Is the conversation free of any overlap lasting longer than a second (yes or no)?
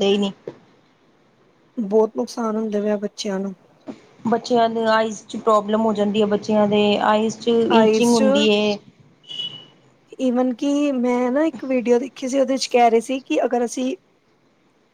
yes